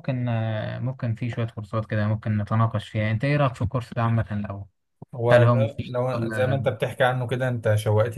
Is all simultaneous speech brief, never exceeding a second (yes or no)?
no